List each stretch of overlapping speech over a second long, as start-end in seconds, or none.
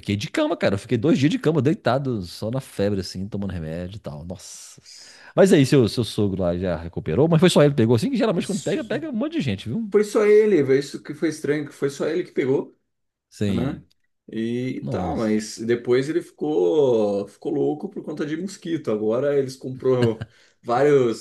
none